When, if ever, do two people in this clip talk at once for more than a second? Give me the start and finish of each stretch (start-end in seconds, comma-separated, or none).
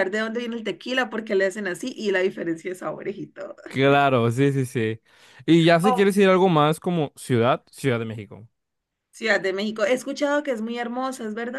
none